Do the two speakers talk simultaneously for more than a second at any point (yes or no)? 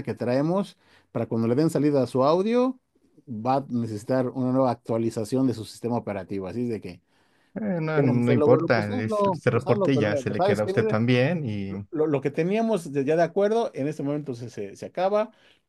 yes